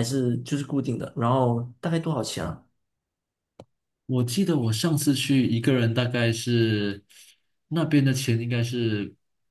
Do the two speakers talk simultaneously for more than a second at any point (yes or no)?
no